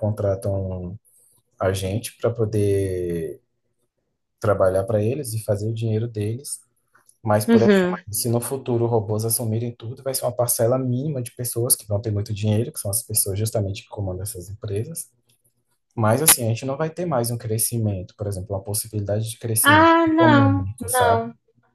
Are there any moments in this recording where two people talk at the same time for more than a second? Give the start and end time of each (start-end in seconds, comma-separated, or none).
19.6-21.2